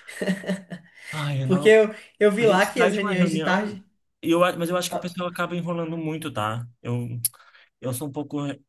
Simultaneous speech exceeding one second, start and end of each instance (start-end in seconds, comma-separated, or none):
2.4-3.8